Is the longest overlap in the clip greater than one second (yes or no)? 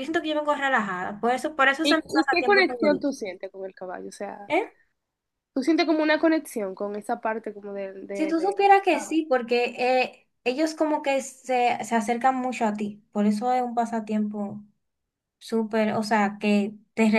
yes